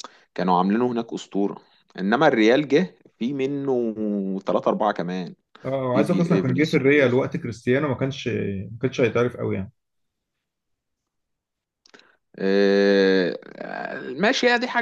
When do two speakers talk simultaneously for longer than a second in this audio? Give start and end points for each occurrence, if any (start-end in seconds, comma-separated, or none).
5.9-7.2